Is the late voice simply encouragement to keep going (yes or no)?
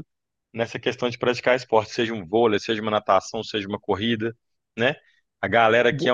yes